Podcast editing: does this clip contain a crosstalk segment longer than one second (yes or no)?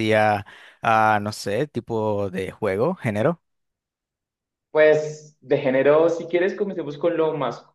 no